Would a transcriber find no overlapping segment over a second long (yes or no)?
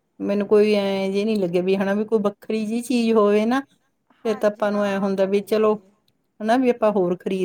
no